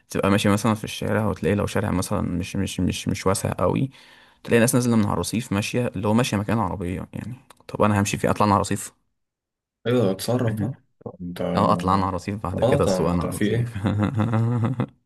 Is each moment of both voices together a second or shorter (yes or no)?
no